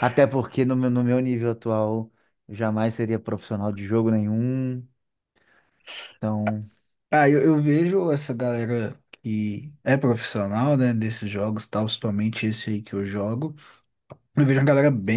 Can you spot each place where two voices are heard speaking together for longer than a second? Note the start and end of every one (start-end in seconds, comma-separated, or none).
none